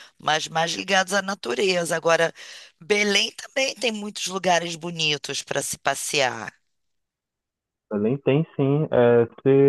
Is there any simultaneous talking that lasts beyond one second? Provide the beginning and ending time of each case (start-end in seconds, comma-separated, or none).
none